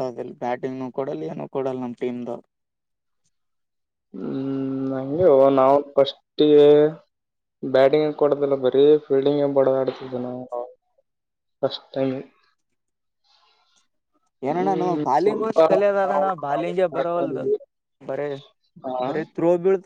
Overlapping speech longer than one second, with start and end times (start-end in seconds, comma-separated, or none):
16.1-17.4